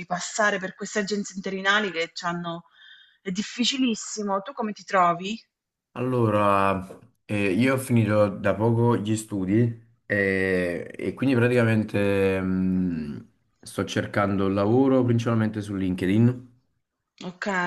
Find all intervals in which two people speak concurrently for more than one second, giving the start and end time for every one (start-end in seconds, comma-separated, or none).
none